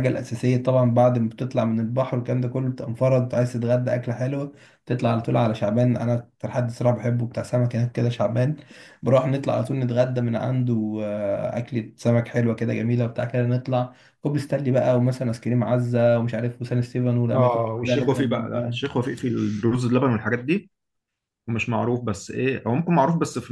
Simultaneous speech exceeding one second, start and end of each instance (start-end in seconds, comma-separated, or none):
17.3-18.8